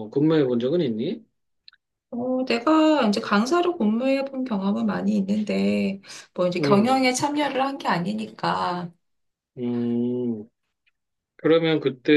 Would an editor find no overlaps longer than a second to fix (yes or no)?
yes